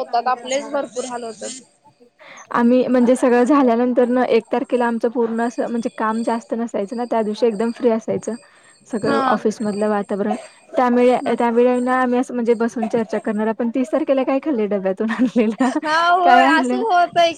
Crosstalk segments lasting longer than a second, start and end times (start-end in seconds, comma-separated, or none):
none